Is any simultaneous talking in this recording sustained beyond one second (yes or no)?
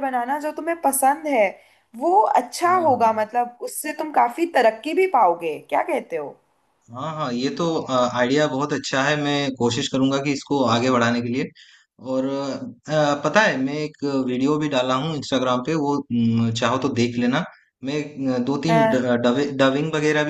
no